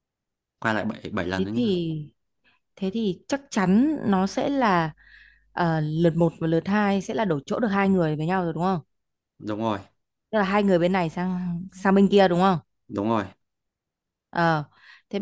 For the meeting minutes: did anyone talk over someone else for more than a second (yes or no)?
no